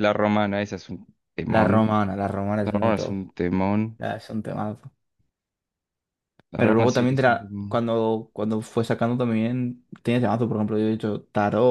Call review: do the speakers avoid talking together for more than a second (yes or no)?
no